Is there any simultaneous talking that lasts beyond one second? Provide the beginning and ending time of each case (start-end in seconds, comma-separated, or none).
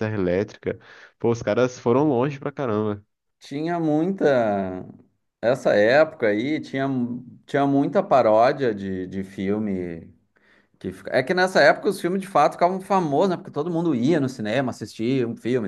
none